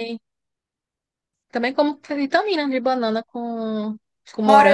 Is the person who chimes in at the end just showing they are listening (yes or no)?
no